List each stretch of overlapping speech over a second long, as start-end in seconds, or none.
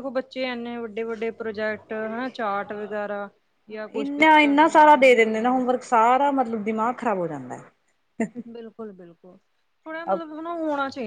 4.0-5.6